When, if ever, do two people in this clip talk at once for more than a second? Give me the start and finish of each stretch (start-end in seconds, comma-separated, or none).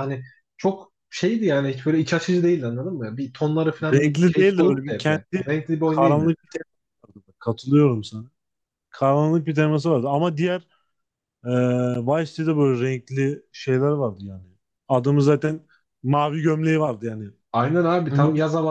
3.9-6.3